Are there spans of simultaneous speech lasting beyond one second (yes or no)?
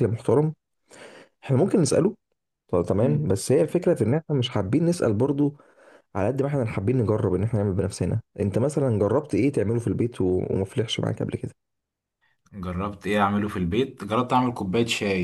no